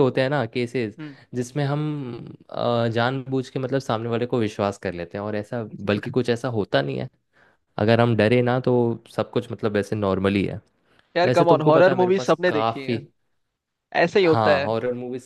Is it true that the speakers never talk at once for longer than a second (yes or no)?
no